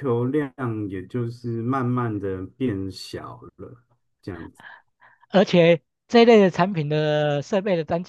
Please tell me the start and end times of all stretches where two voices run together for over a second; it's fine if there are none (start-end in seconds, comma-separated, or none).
none